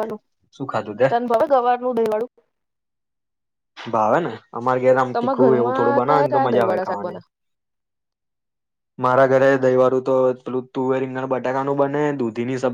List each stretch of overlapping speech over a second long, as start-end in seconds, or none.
5.1-7.2